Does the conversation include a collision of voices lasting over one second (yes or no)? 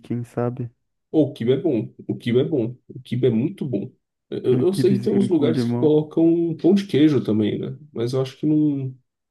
yes